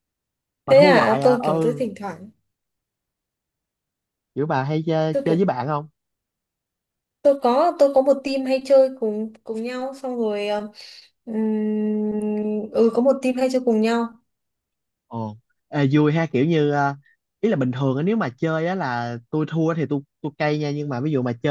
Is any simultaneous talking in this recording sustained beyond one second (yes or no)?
yes